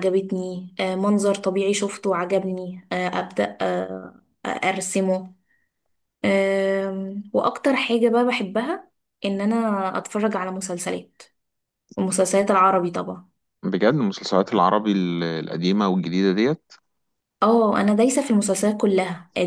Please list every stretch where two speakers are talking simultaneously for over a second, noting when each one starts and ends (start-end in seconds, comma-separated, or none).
none